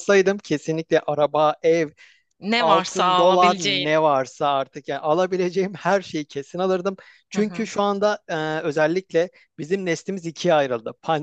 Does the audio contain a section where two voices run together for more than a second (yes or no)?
yes